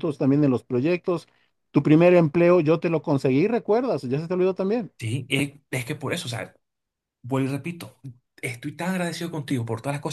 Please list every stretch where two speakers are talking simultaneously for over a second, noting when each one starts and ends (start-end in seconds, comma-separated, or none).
none